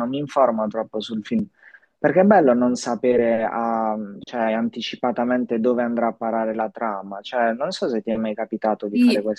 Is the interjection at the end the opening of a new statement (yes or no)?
yes